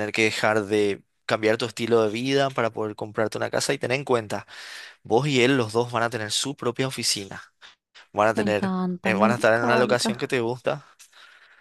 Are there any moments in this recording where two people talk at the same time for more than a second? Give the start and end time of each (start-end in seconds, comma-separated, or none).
8.3-10.3